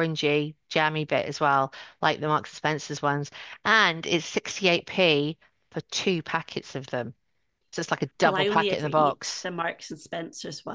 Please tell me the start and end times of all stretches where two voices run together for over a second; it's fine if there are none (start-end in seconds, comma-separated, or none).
8.2-9.5